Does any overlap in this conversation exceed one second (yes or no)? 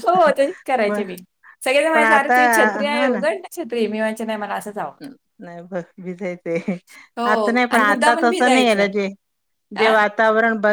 yes